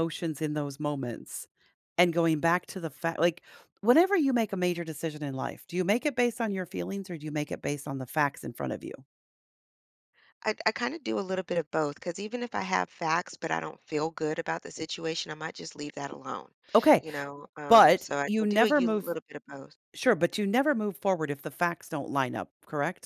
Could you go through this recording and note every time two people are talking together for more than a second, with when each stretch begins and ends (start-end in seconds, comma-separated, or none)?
17.7-19.1